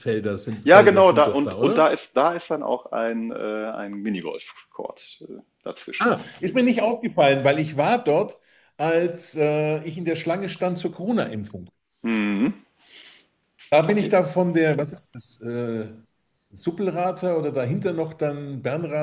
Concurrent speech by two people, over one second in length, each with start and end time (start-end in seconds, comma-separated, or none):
0.6-1.8